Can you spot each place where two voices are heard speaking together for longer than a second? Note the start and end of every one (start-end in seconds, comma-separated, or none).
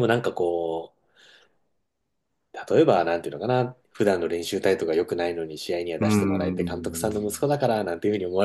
6.0-7.5